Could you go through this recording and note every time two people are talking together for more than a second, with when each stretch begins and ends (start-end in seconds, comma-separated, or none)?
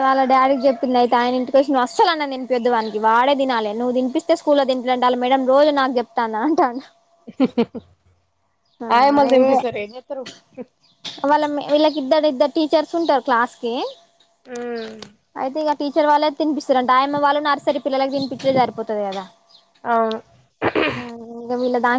none